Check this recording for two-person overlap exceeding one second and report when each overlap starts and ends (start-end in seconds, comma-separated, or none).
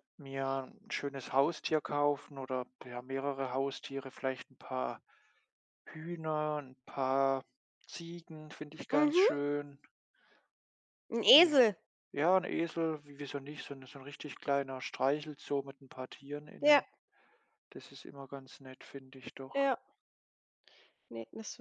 none